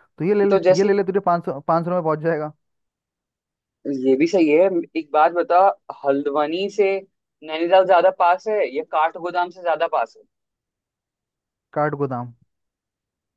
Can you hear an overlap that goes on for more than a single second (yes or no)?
no